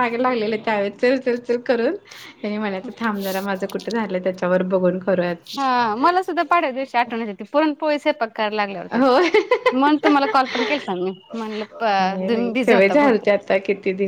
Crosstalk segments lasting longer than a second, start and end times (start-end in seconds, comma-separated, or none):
none